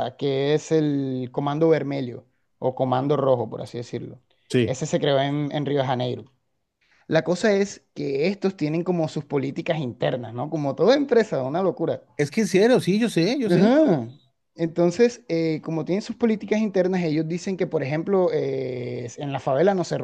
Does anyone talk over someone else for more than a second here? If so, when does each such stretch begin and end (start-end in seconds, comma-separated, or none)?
none